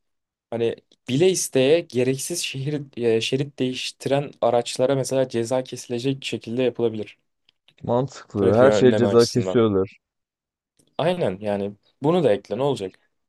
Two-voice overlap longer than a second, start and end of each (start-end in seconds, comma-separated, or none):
8.4-9.6